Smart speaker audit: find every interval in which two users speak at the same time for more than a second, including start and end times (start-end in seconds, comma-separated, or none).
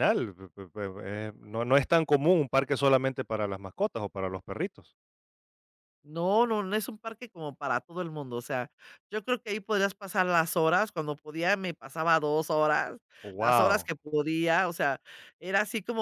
none